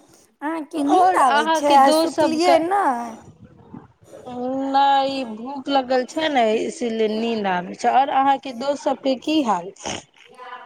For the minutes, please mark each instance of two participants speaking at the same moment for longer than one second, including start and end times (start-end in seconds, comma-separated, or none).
0.8-2.6